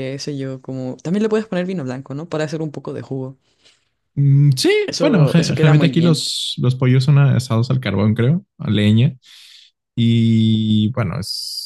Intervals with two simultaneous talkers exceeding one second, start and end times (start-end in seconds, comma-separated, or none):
4.8-6.2